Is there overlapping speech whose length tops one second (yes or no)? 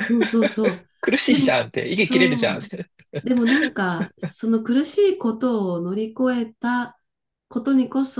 yes